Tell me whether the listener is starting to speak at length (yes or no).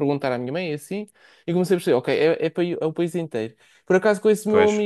no